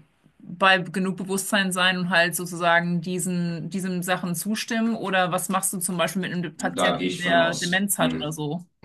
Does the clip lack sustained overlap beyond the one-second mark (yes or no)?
no